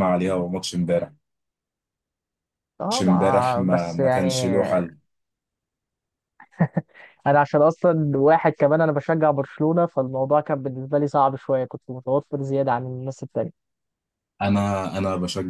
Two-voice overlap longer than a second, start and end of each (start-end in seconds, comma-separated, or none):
2.9-4.9